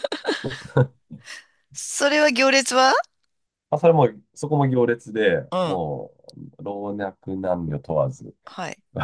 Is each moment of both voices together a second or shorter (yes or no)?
yes